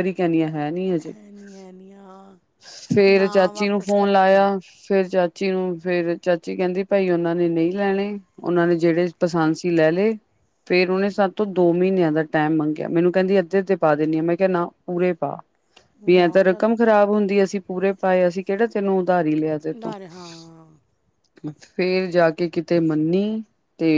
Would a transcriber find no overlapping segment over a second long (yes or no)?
no